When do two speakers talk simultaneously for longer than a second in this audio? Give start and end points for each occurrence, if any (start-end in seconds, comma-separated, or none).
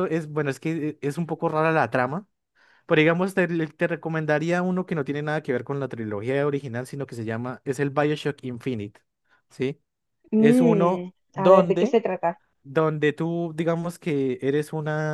10.4-12.0